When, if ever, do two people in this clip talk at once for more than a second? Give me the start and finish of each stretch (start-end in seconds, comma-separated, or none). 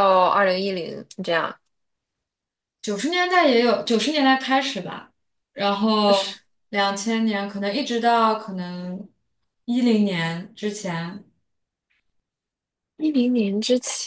none